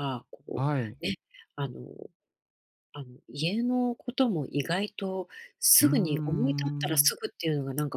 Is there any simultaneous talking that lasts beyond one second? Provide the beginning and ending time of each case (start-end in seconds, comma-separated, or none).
5.8-7.1